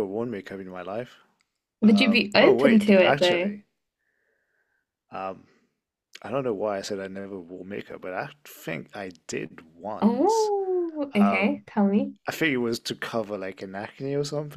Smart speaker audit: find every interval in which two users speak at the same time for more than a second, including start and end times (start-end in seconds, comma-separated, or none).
1.9-3.5